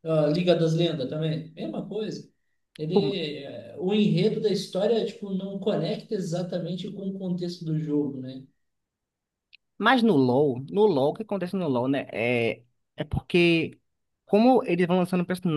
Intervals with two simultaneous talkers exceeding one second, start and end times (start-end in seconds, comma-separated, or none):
none